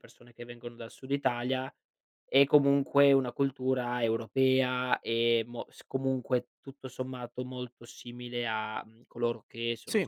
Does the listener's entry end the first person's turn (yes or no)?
no